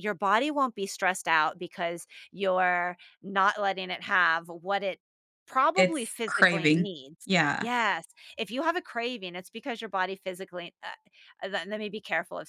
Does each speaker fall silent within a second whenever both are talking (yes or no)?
no